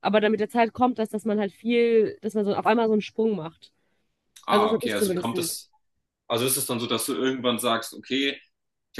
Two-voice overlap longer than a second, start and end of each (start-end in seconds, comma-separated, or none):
4.5-5.7